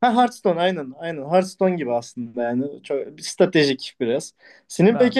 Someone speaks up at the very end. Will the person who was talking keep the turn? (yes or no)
yes